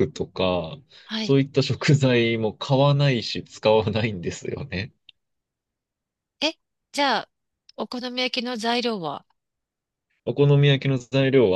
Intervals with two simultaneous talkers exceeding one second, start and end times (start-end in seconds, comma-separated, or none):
none